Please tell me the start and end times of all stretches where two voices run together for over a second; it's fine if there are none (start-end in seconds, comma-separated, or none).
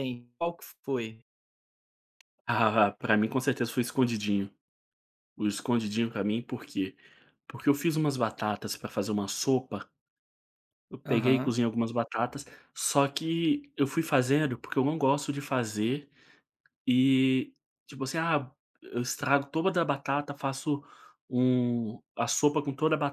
none